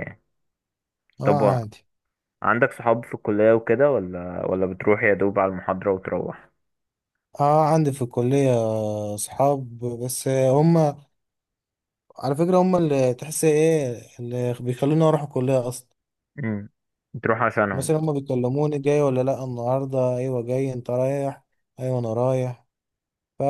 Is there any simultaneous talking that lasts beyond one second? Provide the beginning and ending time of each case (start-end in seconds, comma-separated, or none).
none